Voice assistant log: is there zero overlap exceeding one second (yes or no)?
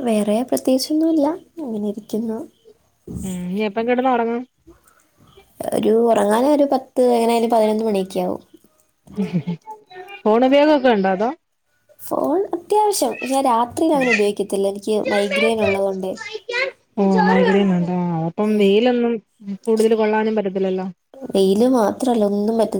yes